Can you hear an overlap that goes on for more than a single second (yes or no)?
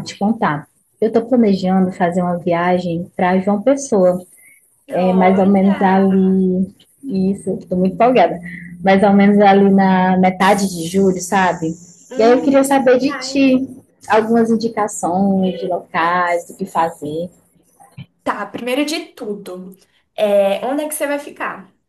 yes